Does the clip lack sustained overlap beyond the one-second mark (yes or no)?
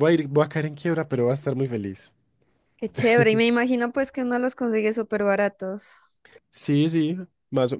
yes